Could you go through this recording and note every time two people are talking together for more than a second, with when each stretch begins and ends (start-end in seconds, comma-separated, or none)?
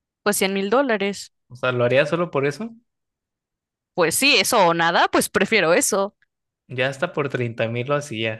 none